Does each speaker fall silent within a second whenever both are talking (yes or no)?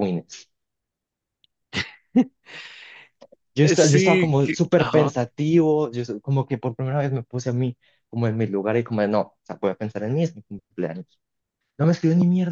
no